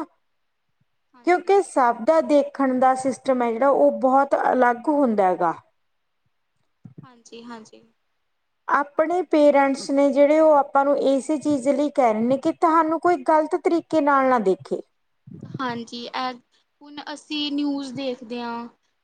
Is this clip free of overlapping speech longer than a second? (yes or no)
yes